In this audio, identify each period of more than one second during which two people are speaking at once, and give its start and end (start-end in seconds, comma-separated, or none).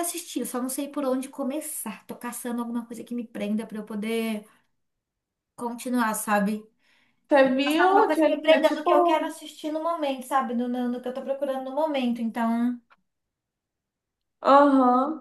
7.9-9.3